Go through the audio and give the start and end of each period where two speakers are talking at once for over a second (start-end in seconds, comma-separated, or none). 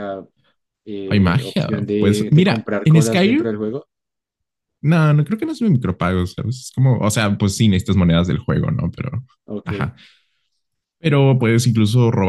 1.1-3.5